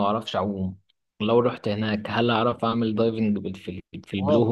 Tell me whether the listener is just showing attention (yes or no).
no